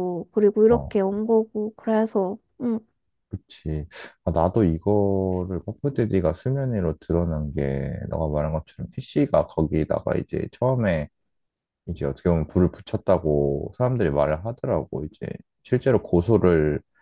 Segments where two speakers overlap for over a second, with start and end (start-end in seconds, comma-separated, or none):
none